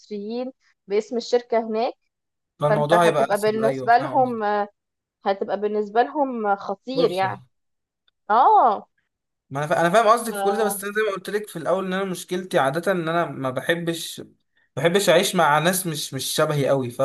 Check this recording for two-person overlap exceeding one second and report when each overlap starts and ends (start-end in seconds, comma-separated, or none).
2.6-4.4